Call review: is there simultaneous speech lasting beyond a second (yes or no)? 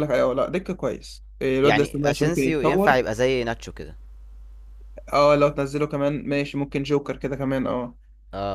yes